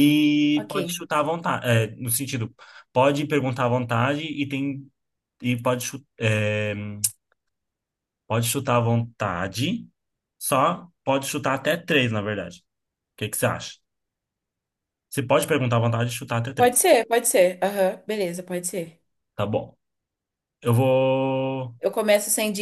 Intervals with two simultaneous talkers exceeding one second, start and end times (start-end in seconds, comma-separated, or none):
none